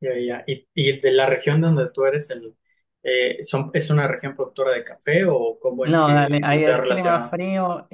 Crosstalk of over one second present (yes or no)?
yes